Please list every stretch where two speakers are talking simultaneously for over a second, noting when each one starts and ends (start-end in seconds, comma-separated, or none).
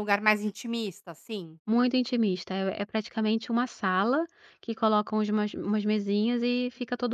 none